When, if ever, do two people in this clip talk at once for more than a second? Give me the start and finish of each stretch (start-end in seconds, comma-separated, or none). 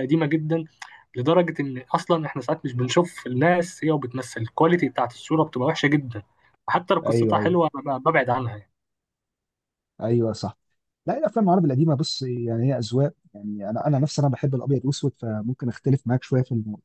none